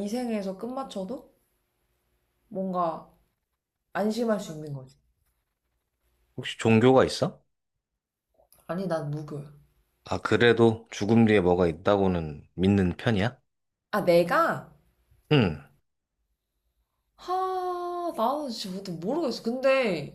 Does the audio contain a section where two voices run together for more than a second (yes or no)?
no